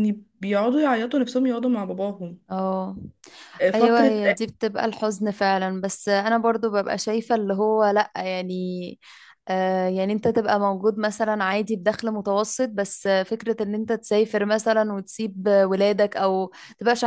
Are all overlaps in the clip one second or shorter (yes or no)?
yes